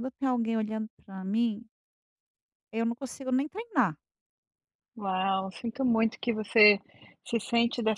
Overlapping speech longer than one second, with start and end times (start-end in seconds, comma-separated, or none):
none